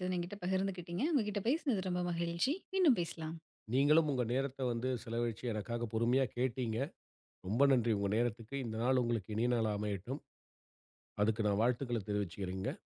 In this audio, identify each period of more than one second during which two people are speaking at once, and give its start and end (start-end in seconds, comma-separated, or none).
none